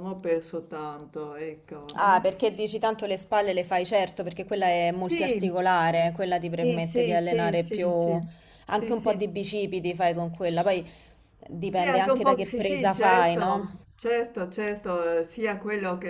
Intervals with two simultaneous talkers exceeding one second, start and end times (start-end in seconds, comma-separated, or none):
6.6-7.9, 11.7-13.8